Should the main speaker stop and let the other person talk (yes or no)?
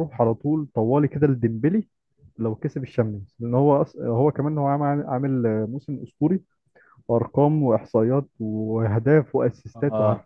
yes